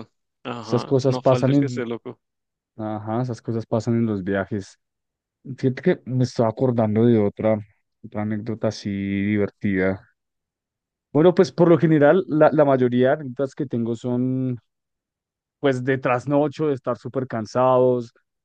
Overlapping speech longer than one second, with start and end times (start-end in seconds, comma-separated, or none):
0.6-1.9